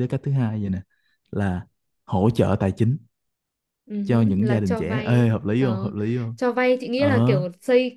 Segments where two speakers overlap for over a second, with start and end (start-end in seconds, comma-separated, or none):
4.0-5.9